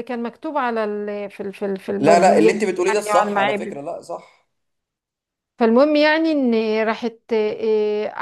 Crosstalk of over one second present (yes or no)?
yes